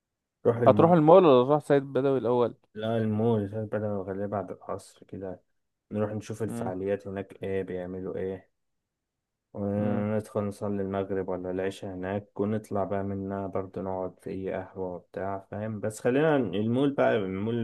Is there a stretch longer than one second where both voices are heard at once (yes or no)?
no